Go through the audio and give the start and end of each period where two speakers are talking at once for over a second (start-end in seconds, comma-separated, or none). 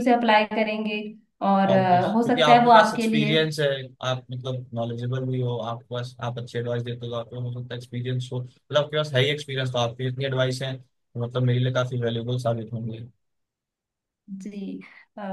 1.7-3.3